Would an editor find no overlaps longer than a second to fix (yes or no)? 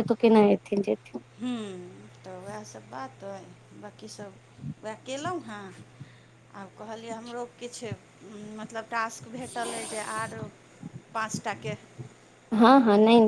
yes